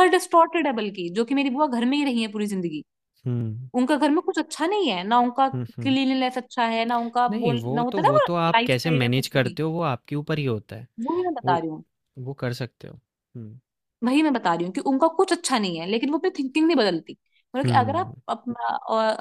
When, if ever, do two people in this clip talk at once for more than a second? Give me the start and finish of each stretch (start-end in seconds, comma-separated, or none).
7.3-9.6